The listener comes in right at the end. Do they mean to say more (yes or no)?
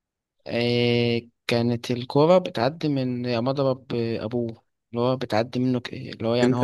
yes